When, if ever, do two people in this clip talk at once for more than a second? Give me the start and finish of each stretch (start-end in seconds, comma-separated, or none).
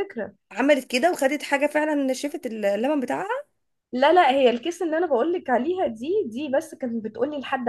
none